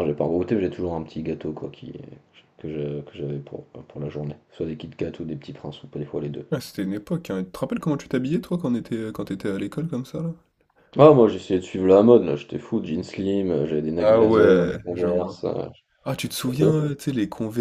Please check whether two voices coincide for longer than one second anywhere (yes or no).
yes